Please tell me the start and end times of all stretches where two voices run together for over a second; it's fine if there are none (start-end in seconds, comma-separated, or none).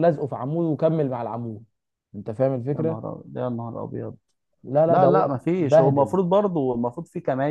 4.9-6.2